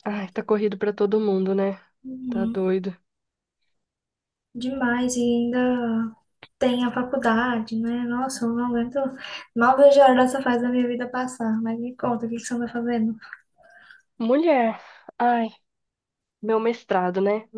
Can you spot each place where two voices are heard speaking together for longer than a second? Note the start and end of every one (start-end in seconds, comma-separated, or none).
none